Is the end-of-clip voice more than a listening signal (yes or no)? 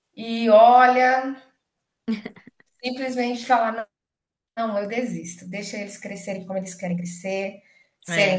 no